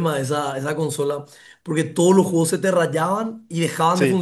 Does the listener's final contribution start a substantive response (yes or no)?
no